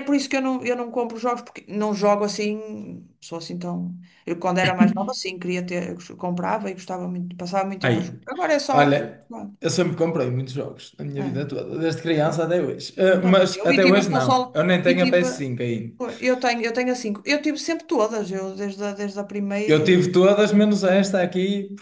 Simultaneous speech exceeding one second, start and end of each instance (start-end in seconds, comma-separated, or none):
13.2-15.3